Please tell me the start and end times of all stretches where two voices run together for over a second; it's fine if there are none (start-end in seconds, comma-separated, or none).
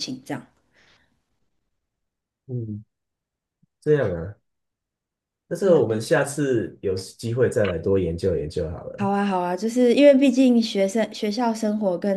none